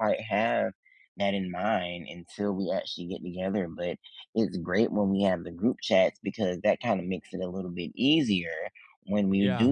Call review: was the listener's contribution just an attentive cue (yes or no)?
yes